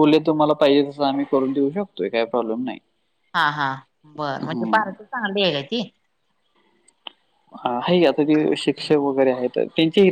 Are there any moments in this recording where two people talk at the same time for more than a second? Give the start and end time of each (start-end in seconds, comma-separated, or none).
none